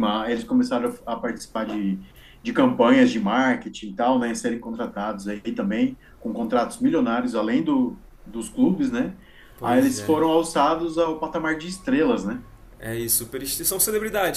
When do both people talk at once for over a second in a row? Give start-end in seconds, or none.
none